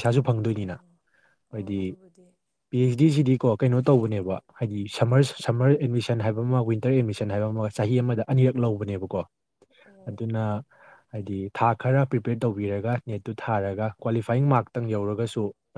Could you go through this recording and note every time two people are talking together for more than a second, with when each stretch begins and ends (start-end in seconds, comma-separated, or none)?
12.6-15.0